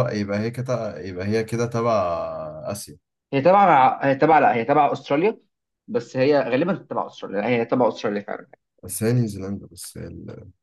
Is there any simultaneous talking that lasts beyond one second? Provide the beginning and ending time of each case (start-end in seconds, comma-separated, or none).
none